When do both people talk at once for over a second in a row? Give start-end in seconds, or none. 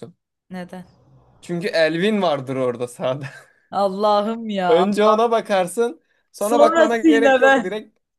6.4-7.7